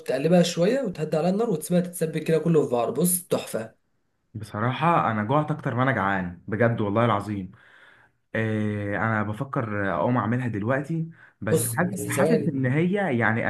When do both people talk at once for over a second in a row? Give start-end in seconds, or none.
11.5-12.8